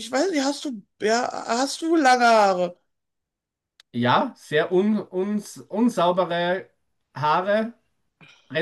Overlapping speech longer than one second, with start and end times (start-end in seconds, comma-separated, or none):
none